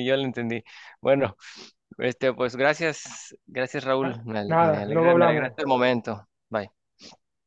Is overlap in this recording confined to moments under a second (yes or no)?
no